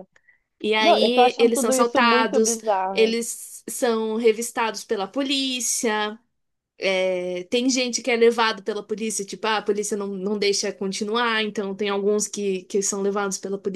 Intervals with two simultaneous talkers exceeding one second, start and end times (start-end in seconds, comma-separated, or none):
0.8-3.2